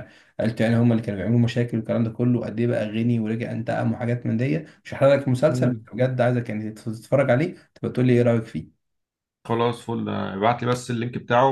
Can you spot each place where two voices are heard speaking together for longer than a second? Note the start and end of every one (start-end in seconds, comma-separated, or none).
none